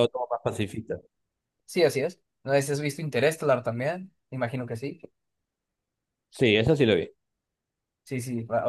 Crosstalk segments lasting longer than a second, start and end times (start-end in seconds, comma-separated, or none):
none